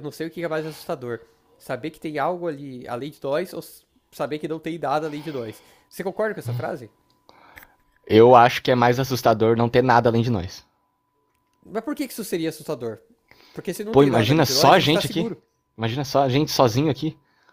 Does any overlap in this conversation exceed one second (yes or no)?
yes